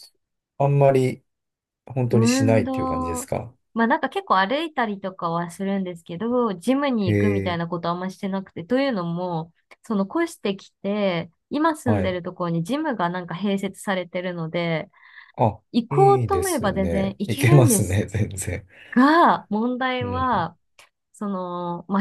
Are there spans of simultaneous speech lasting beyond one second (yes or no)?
yes